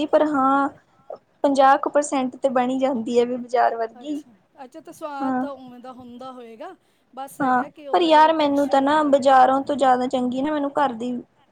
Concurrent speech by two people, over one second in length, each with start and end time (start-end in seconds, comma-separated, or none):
7.4-9.3